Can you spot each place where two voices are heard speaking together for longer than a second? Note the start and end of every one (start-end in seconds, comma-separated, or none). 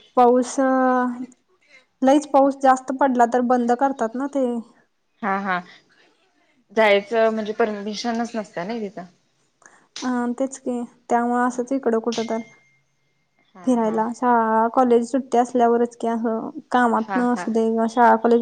none